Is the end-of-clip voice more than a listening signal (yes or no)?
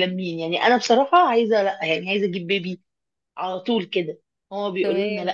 no